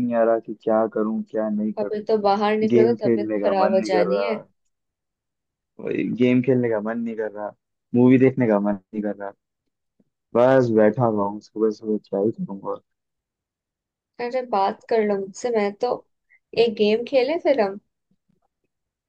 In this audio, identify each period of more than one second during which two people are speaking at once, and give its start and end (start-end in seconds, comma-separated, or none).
2.7-4.4